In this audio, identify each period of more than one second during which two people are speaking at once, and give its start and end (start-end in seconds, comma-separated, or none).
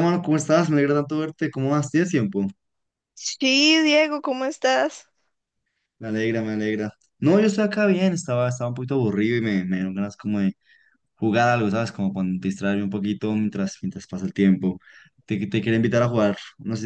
none